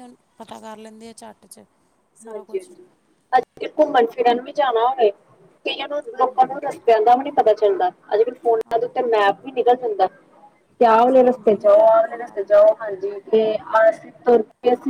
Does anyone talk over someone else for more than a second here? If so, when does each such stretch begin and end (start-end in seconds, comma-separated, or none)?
10.9-12.5